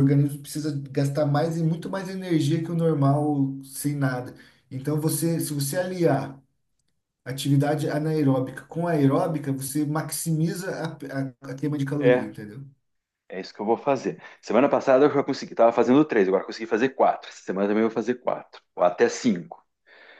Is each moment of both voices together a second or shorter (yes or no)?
yes